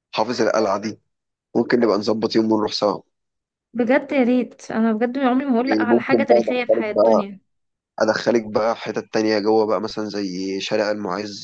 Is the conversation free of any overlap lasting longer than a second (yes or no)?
no